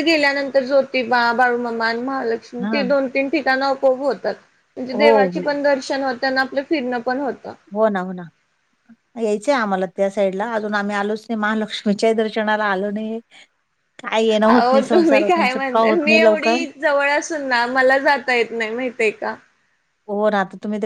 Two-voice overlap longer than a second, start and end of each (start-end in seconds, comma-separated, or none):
14.5-16.6